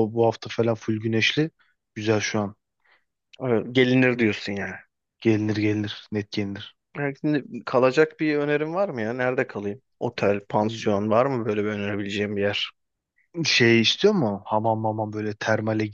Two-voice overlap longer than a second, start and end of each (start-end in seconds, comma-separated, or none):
none